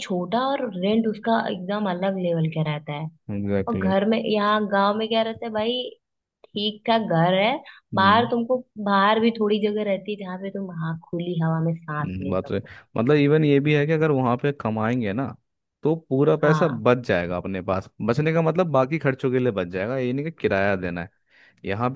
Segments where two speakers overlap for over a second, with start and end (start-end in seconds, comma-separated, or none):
none